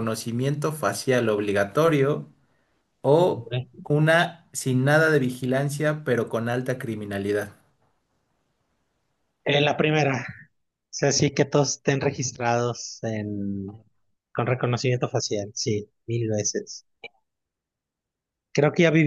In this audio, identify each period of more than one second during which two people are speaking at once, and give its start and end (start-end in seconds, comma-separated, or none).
none